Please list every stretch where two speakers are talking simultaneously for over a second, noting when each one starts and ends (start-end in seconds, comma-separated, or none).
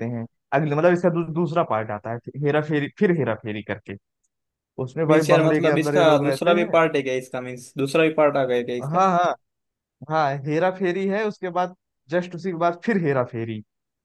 5.1-6.8